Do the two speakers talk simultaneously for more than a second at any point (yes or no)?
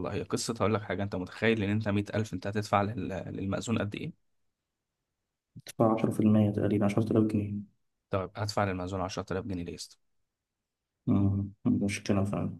no